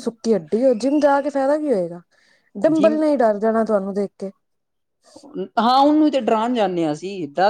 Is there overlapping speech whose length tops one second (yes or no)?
no